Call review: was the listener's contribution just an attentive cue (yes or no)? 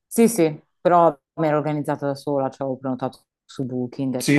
no